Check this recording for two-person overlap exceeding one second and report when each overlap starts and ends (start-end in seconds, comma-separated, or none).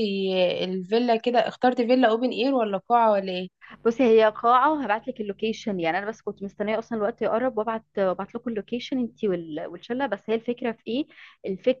none